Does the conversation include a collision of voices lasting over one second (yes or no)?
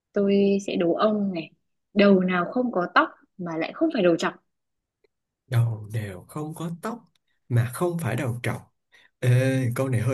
no